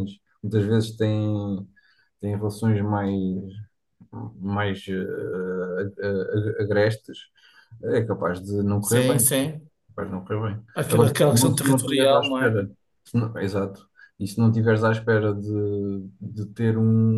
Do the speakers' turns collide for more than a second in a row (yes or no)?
yes